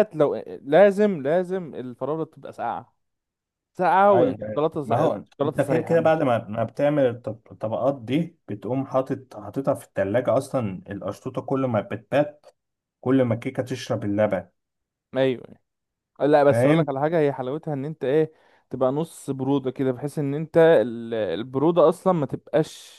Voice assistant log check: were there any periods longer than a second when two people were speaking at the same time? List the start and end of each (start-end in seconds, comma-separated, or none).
4.1-6.3